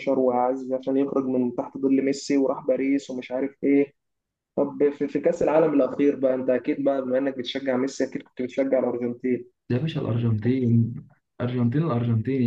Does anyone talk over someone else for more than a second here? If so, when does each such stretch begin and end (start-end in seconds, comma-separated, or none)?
none